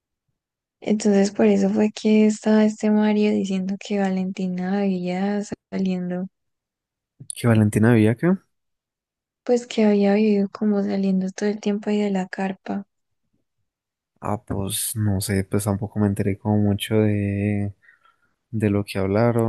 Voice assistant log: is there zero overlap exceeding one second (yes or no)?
yes